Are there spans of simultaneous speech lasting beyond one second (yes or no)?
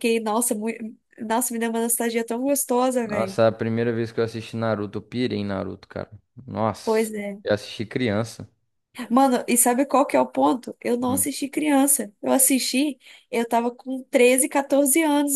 no